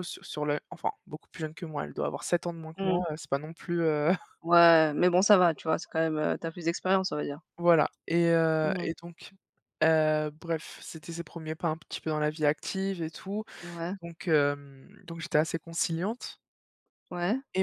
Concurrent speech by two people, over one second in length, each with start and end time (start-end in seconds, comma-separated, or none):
none